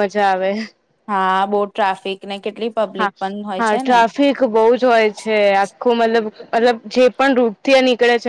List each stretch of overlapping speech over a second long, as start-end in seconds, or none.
none